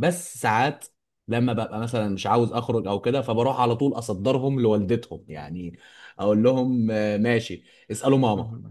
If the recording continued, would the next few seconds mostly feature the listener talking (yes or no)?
no